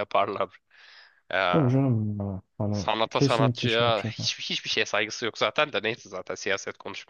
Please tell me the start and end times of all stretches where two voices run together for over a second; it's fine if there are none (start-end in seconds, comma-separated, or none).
2.7-4.3